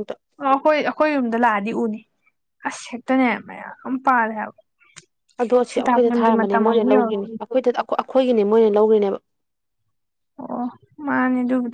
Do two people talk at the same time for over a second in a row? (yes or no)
yes